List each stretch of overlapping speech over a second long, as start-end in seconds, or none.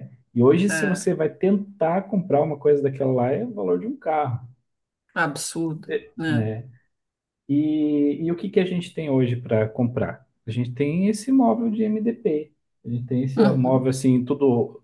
none